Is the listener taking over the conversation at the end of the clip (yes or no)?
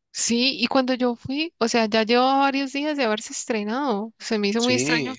yes